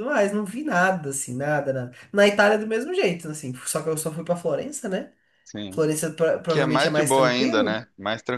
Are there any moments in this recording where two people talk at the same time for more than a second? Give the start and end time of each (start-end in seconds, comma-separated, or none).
6.5-7.8